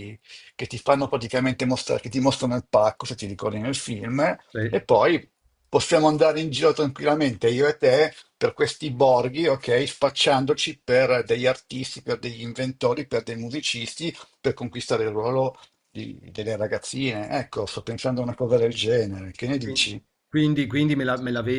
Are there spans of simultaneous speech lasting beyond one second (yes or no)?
no